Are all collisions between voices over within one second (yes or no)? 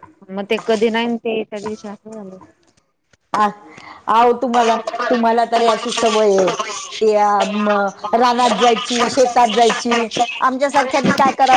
yes